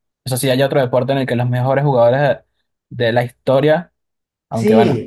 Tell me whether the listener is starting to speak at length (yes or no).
yes